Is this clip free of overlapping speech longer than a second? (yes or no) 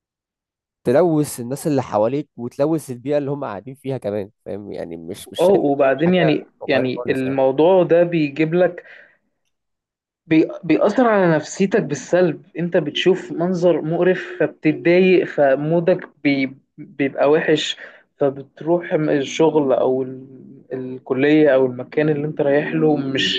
no